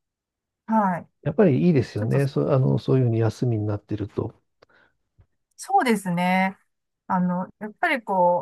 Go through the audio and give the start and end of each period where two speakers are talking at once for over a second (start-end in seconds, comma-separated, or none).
none